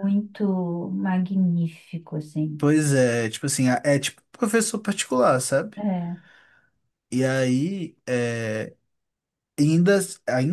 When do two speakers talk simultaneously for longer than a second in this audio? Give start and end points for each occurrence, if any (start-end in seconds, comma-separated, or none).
none